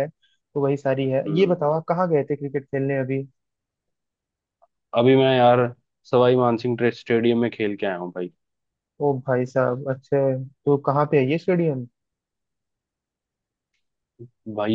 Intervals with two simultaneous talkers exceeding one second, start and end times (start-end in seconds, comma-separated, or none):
none